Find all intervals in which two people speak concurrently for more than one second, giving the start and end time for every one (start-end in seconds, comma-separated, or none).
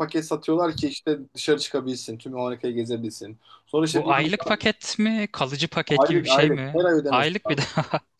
5.9-7.7